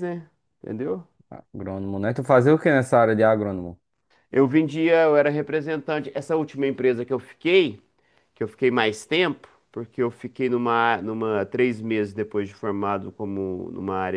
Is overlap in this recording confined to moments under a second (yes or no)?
yes